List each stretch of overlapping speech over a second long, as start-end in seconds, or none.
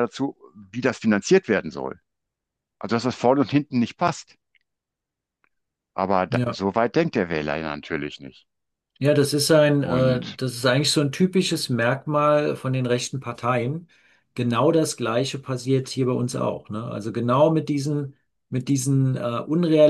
none